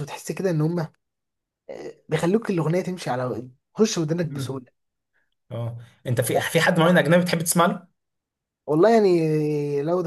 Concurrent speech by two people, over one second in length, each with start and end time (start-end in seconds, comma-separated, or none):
none